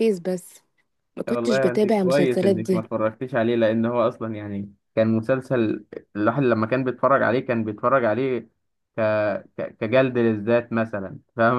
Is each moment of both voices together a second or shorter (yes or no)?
no